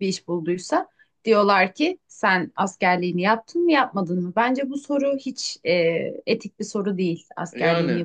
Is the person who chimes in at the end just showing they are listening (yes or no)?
no